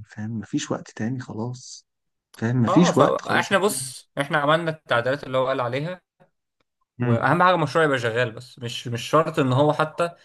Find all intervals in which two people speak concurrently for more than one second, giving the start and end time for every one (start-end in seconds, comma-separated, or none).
2.7-3.9